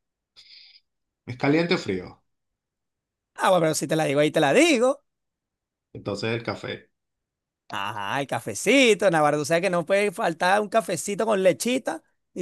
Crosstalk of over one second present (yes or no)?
no